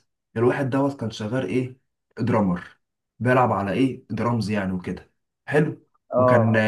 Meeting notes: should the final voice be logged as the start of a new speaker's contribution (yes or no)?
no